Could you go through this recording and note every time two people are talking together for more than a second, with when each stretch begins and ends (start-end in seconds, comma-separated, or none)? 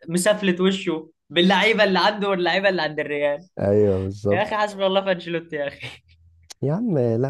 none